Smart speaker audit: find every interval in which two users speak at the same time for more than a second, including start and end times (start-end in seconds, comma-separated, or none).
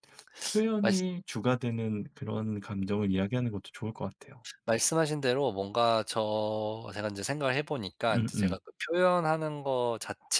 none